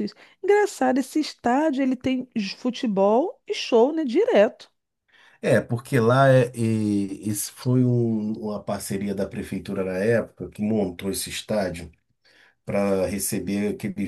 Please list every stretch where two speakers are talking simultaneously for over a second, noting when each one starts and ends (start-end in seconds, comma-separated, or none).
none